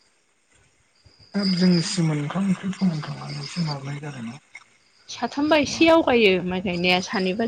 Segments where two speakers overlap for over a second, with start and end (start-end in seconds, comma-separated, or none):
none